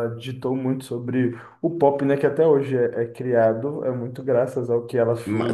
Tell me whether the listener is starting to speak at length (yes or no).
yes